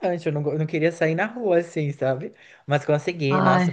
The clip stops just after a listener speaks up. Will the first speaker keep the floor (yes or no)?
yes